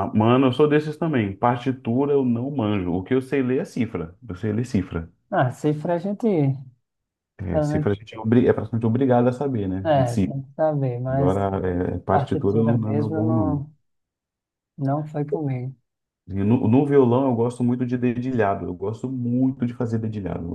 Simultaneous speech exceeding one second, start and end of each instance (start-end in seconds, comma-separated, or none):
12.1-13.7